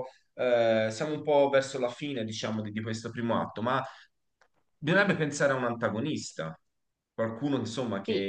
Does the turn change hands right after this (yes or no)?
yes